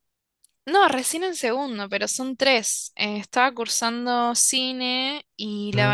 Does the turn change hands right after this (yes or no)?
no